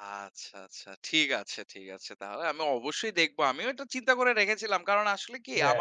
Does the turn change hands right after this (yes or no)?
no